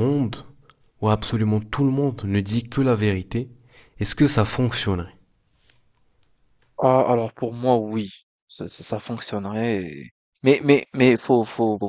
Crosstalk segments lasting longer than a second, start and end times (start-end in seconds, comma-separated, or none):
none